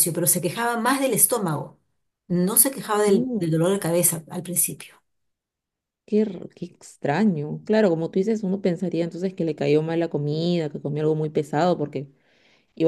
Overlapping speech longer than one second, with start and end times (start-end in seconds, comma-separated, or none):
none